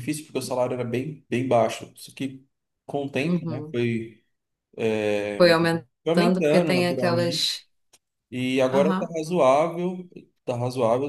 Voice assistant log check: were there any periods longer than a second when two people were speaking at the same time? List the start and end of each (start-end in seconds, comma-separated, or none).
6.0-7.6